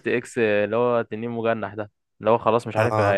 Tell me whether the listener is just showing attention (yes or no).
yes